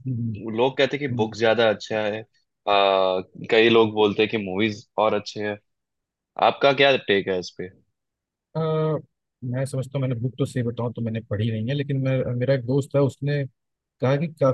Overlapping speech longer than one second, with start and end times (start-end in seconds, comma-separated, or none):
none